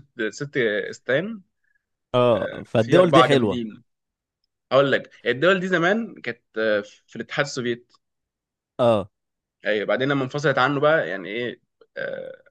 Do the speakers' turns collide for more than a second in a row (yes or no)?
yes